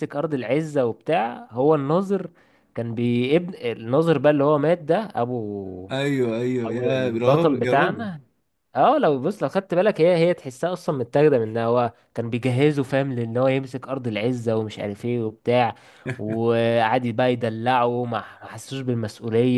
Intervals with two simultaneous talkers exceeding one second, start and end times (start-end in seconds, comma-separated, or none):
6.6-8.1